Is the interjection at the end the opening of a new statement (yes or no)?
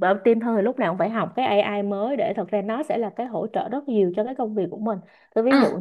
no